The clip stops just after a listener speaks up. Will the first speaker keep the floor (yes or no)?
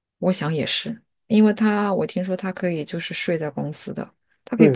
no